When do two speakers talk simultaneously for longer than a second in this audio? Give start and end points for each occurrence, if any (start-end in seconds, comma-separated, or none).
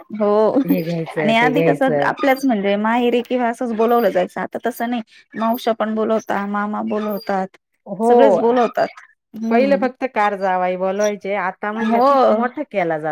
none